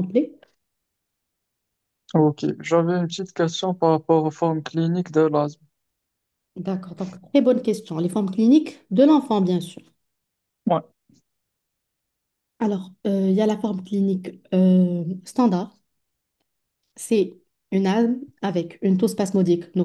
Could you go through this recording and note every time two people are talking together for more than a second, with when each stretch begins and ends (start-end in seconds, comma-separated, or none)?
none